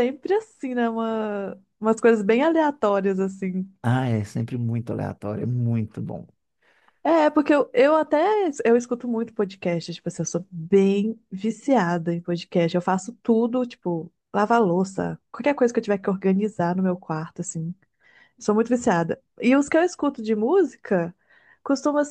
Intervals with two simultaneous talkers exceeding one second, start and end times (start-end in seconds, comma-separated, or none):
none